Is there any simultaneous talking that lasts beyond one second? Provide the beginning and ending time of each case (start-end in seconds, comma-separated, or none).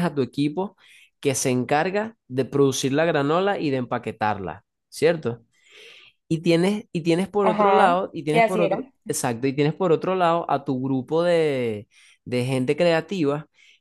7.4-8.9